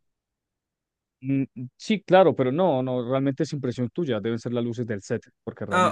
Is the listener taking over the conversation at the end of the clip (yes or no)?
yes